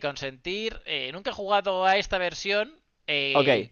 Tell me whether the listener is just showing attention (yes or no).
yes